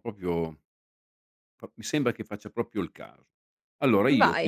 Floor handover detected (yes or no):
no